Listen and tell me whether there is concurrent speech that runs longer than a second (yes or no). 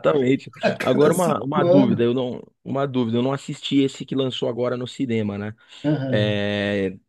yes